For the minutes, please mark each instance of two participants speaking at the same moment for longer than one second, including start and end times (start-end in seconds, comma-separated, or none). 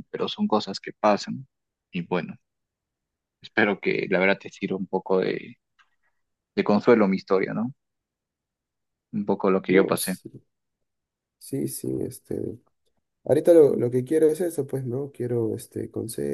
none